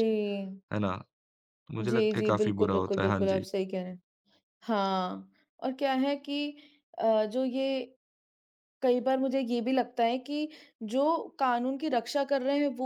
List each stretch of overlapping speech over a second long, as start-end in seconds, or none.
1.8-3.5